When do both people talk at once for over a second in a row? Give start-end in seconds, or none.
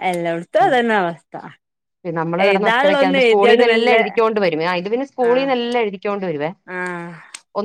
2.5-4.0